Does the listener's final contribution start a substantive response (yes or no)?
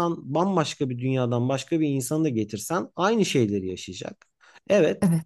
no